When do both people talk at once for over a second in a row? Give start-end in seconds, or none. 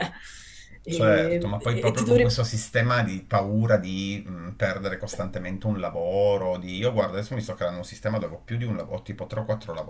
0.9-2.4